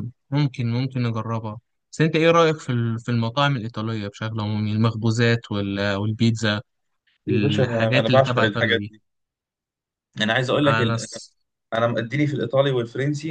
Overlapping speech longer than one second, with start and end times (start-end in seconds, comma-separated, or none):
7.3-8.9